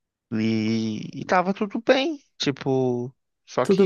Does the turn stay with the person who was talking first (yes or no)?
no